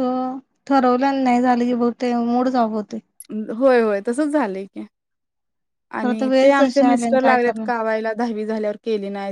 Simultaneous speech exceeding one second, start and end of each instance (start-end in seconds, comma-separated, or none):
6.0-7.7